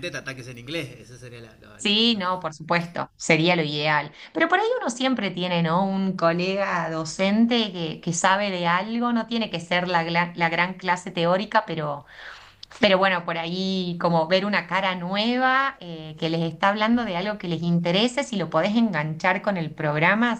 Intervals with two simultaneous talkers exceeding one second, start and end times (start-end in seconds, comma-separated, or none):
none